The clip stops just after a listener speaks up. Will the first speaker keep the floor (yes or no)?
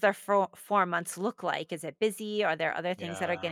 yes